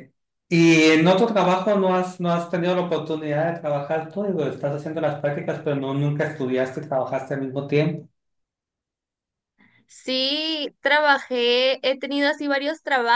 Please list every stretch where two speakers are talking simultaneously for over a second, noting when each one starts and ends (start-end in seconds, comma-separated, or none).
none